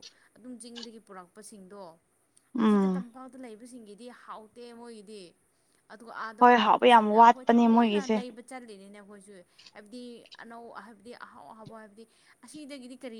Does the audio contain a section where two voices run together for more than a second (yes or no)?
yes